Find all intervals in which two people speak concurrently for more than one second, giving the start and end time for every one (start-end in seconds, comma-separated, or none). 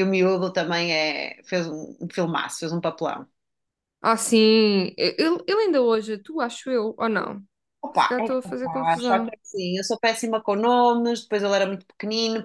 7.9-9.3